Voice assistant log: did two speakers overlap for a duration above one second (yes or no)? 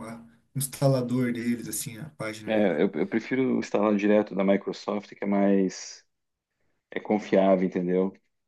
no